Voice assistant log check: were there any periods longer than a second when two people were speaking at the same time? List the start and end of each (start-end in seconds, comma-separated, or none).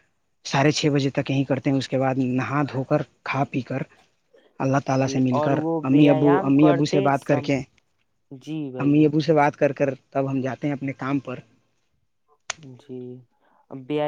5.0-7.5